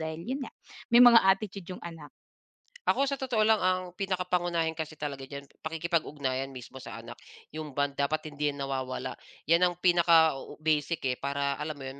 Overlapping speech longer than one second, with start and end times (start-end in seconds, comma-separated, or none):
none